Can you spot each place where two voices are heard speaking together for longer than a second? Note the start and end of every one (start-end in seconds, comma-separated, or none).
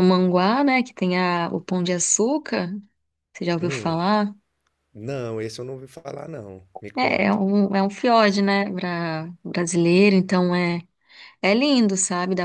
none